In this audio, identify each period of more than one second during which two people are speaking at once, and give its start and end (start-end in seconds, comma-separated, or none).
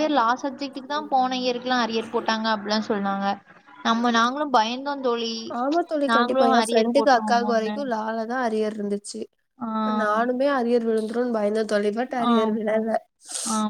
6.1-7.8